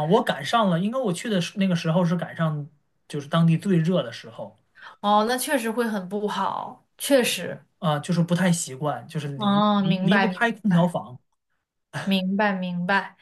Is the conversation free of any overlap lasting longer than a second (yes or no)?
no